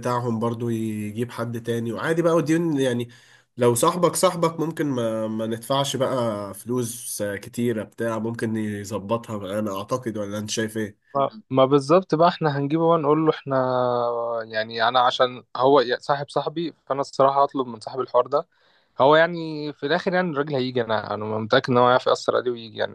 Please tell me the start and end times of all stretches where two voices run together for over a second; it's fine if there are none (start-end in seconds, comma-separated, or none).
none